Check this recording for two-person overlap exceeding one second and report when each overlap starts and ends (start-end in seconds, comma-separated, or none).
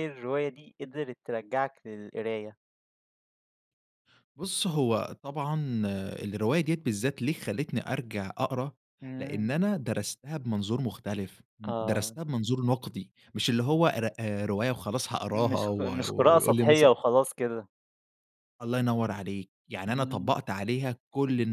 15.3-16.9